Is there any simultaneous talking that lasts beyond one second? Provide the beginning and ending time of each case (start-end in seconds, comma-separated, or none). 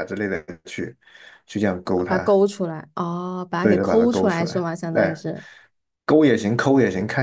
3.6-5.1